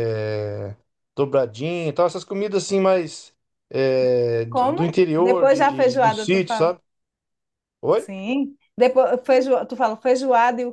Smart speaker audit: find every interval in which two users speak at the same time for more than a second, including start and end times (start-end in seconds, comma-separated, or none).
4.5-6.8